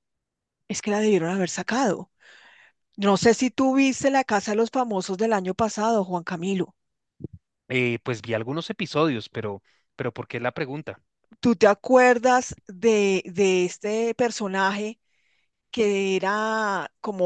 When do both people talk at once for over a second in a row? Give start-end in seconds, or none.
none